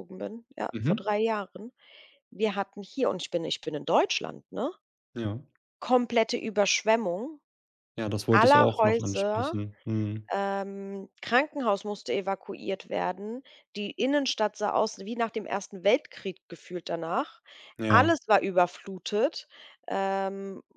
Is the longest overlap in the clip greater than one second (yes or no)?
yes